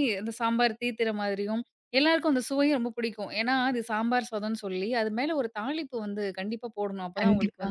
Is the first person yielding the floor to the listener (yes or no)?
no